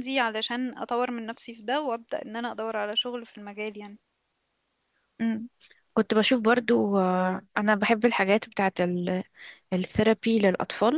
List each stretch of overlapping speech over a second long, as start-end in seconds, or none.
none